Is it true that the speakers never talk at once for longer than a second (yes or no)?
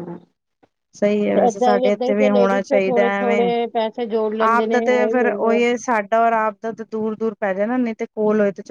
no